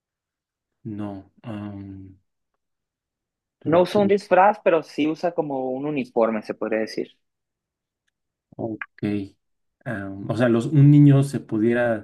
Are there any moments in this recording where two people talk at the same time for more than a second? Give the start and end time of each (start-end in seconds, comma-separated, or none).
none